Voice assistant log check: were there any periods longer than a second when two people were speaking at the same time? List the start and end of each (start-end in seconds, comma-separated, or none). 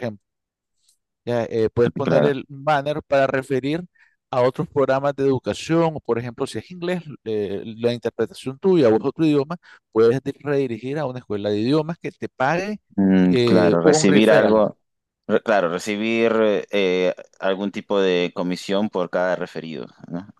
13.3-14.6